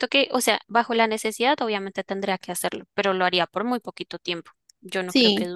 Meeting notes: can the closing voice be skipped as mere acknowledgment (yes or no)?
no